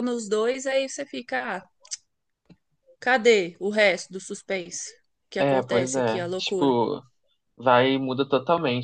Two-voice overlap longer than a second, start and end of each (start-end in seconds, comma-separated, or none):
5.4-6.8